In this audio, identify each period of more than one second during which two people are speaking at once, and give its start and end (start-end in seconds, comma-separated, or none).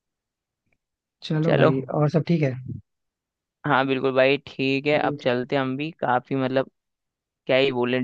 none